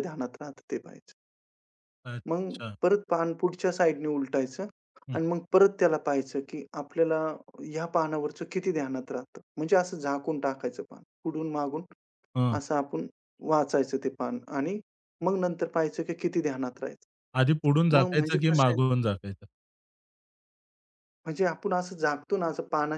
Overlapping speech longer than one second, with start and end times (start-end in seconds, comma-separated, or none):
17.4-18.8